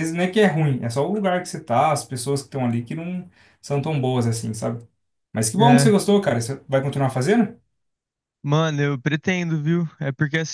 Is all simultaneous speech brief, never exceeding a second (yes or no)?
yes